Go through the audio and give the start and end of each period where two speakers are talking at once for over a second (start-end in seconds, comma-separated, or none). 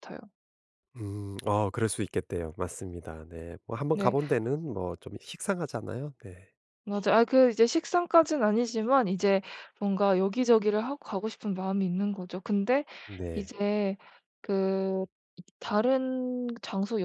none